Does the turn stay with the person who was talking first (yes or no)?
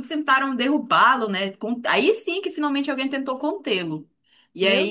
yes